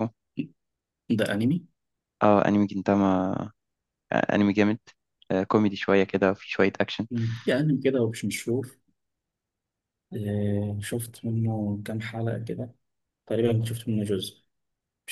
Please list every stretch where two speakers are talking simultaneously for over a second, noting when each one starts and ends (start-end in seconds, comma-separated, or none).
none